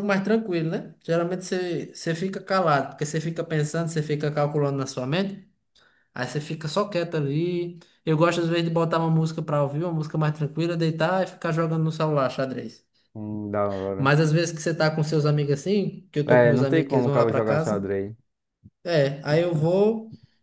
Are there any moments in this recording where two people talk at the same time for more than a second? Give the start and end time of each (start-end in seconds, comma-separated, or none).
16.2-17.9